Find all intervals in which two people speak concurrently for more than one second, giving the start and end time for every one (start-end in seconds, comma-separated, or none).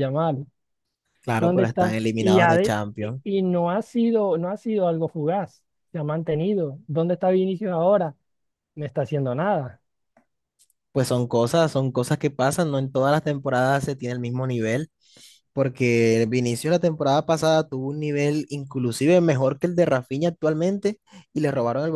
1.4-3.2